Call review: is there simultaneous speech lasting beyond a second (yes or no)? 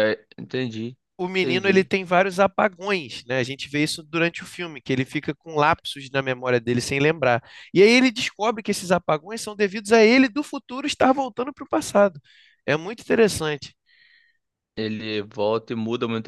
no